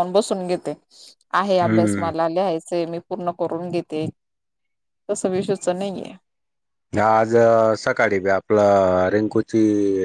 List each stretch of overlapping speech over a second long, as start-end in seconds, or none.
none